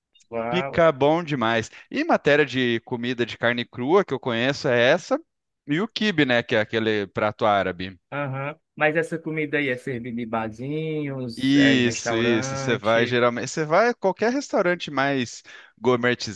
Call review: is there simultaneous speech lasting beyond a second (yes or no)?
yes